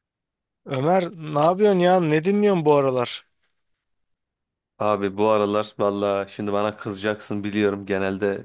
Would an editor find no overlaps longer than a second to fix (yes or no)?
yes